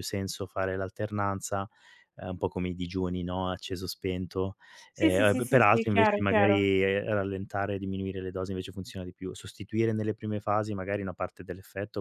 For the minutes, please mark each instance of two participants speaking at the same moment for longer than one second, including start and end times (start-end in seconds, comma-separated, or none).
5.0-6.7